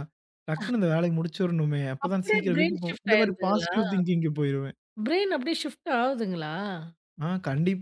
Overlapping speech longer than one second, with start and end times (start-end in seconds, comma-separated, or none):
2.0-3.7